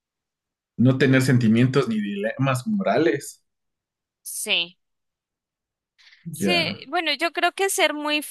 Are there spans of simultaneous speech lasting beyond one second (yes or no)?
no